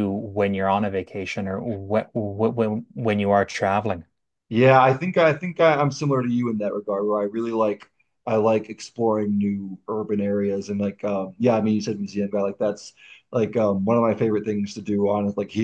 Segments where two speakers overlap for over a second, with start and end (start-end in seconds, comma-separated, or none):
none